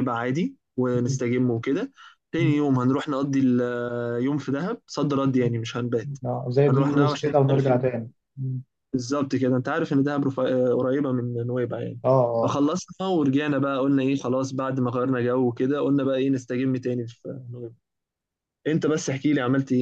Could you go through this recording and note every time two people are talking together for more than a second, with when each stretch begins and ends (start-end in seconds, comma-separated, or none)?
6.7-7.9